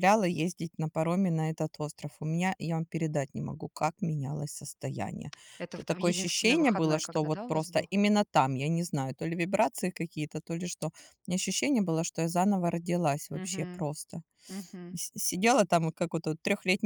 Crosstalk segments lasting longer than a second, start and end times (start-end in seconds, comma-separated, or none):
5.8-7.9